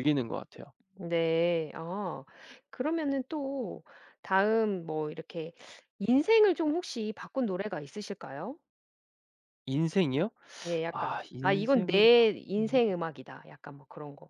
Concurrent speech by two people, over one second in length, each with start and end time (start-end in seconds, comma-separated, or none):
10.9-12.8